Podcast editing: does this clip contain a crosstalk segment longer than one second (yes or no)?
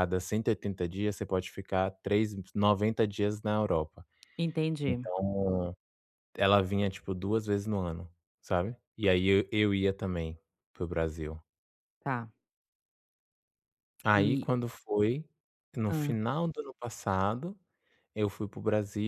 no